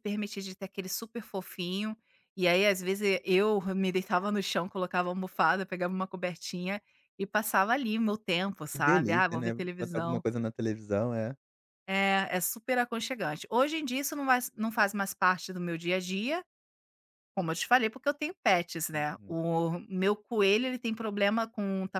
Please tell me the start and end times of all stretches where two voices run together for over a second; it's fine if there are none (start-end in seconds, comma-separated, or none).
8.7-10.2